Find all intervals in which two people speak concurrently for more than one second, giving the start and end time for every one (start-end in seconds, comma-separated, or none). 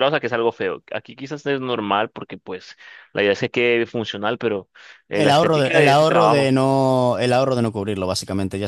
5.1-6.5